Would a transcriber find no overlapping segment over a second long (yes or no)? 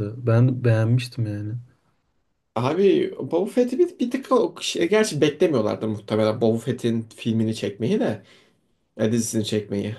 yes